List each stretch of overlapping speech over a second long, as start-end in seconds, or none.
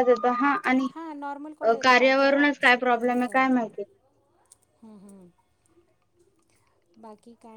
none